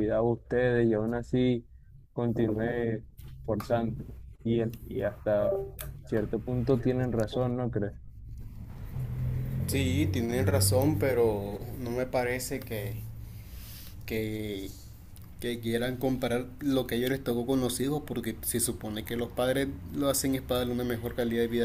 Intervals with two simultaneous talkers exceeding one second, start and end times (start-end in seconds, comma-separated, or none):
none